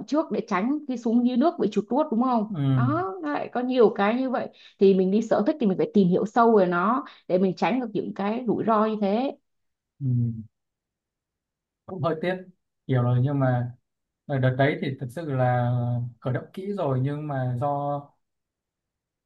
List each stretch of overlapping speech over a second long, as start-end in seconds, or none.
none